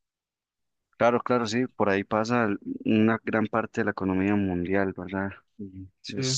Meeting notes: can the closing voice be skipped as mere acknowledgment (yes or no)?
yes